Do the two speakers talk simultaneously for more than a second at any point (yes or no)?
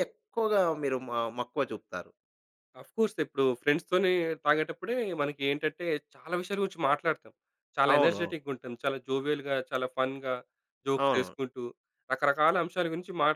no